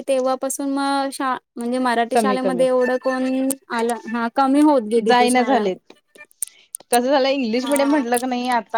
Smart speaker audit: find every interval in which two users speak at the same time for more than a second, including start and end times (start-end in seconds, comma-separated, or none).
none